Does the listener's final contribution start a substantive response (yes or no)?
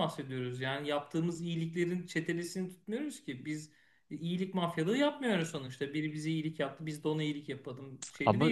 no